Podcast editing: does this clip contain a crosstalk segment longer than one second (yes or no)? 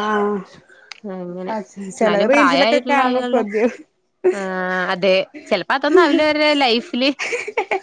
yes